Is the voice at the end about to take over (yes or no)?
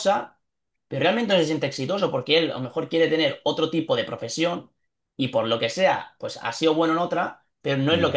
no